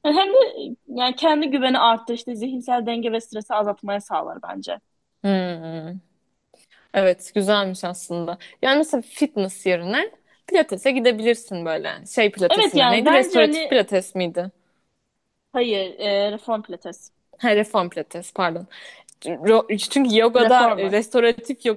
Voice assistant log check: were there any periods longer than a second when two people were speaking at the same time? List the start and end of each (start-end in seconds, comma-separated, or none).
12.5-13.9